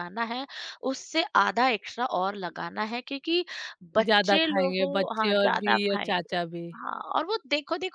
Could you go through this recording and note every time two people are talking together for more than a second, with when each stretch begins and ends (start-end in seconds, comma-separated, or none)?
4.0-6.3